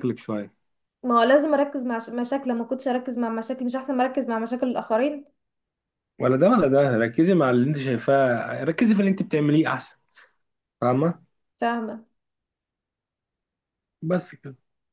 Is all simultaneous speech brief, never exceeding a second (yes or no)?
yes